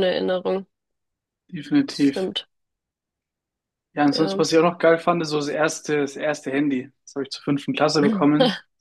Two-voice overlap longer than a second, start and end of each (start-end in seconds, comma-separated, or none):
none